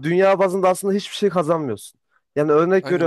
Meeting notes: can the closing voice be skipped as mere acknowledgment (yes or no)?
yes